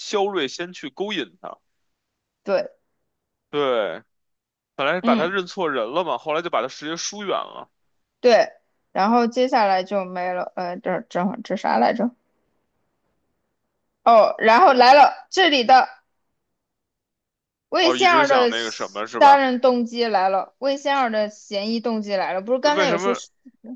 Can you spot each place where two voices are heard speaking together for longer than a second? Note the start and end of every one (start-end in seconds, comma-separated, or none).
17.8-19.4